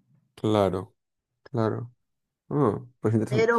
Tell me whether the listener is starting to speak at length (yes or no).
yes